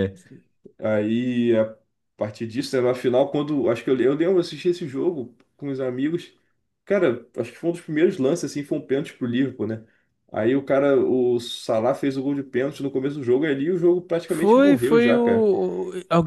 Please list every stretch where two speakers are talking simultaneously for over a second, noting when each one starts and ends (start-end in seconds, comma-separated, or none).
14.2-15.5